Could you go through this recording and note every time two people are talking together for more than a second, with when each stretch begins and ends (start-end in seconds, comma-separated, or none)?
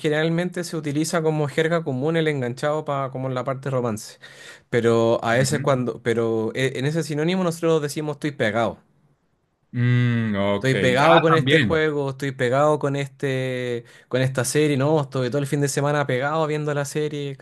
10.5-11.9